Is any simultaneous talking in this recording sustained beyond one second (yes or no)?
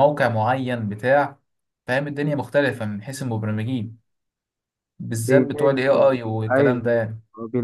yes